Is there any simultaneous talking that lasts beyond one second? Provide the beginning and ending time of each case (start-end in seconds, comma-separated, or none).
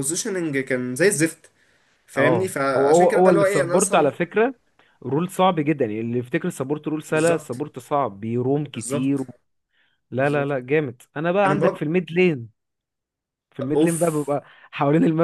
2.2-4.1